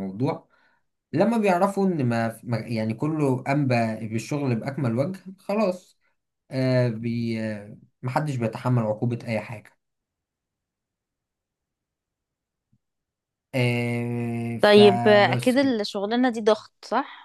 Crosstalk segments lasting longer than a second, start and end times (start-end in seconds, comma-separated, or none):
14.6-15.8